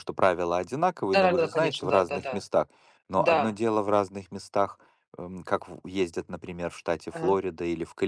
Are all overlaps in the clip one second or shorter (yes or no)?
no